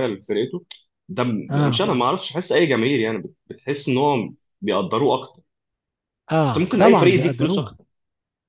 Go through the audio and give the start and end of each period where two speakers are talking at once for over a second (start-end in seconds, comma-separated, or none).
6.5-7.7